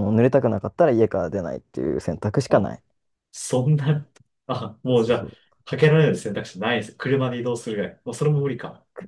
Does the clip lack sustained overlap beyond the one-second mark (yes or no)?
yes